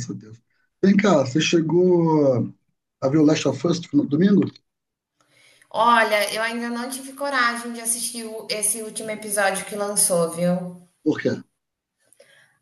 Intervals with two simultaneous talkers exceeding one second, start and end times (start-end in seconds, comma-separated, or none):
none